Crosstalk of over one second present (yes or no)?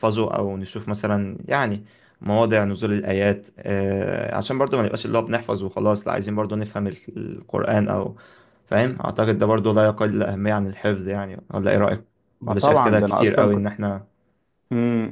yes